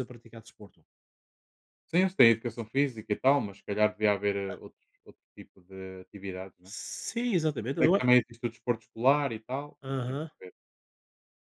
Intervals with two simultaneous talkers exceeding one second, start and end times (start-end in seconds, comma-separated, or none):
none